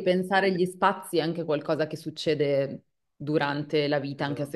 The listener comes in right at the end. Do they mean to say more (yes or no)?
no